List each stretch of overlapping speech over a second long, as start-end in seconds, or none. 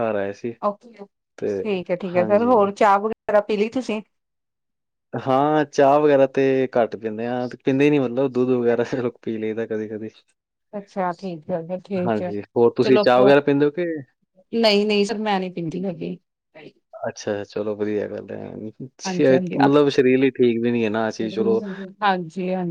none